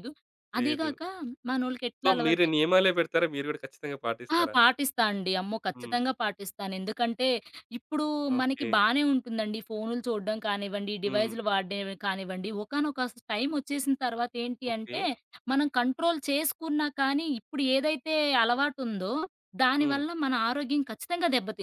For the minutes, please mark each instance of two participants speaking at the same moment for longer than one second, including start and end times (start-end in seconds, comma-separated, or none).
none